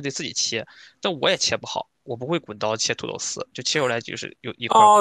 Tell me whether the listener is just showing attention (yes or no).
no